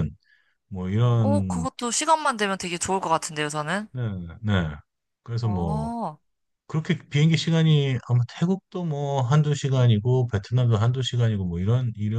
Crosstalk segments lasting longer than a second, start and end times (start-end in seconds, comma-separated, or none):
none